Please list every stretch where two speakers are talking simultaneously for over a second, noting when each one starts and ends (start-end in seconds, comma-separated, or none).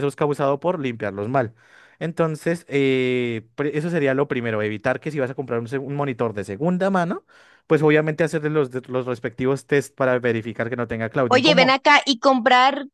none